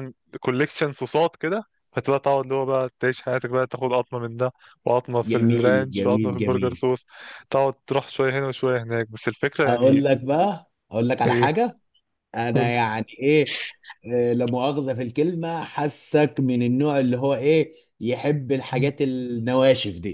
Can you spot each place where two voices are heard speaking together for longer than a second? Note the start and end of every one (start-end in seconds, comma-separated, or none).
5.2-6.8